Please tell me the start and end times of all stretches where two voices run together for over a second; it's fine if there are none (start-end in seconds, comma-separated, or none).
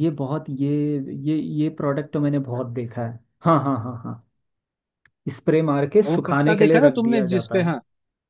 6.1-7.7